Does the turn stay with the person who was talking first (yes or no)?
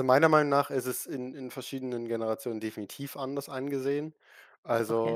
yes